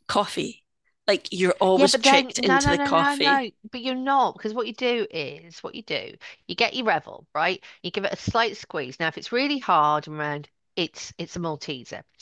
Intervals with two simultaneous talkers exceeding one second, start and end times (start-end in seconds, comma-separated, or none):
1.7-3.5